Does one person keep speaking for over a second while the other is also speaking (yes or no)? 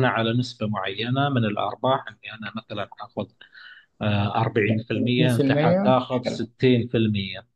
yes